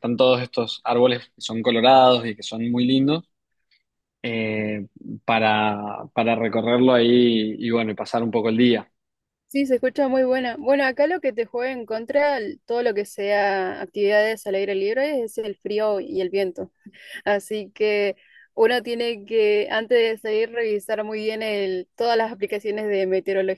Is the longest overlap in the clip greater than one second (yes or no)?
no